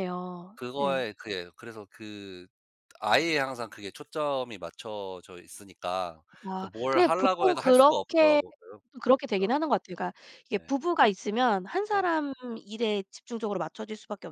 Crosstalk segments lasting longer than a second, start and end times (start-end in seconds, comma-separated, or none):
6.6-8.4